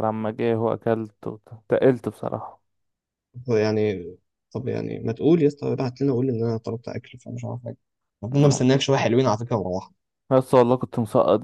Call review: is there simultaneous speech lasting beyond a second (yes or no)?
no